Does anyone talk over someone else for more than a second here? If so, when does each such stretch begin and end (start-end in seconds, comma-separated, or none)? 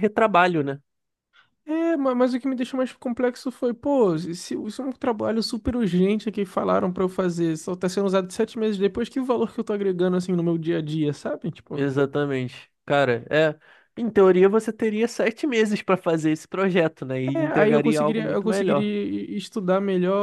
17.3-18.9